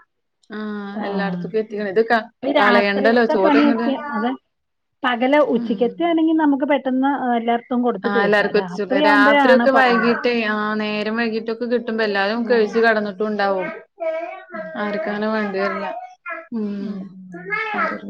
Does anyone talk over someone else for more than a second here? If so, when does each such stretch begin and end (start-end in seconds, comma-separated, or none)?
2.6-3.9